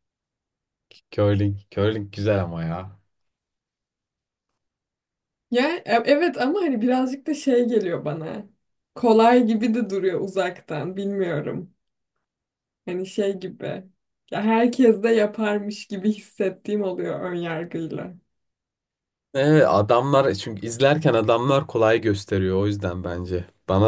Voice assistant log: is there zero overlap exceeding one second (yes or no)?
yes